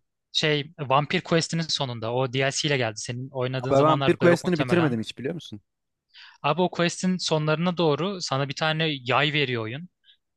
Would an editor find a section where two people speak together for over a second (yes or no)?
yes